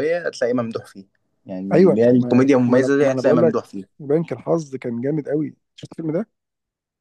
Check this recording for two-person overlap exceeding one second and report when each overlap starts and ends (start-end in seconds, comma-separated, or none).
1.7-3.6